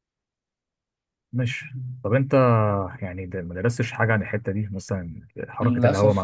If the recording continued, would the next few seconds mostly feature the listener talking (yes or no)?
yes